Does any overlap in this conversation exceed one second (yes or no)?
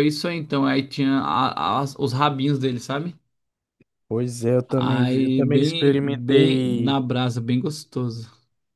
yes